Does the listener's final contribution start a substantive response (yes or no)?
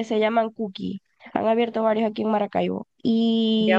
yes